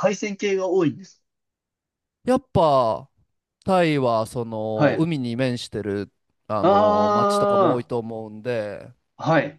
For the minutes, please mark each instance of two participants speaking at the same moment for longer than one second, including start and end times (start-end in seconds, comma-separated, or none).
6.6-7.9